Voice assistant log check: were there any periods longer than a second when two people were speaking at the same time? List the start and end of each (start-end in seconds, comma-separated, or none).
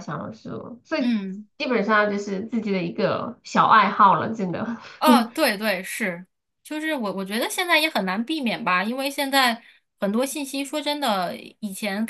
none